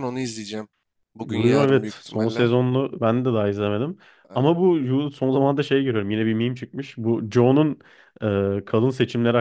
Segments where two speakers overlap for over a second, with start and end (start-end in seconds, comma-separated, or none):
1.2-2.5